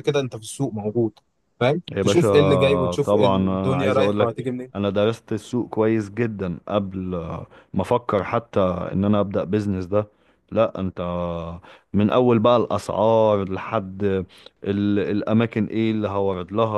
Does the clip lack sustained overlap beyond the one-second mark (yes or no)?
no